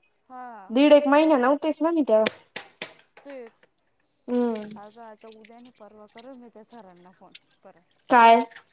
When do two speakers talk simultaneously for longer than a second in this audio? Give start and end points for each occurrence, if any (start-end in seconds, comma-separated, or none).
none